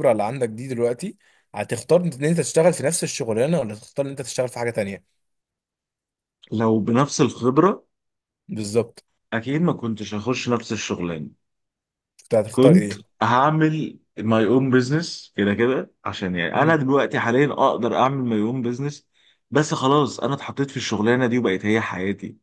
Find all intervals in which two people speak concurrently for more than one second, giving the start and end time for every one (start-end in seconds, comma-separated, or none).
none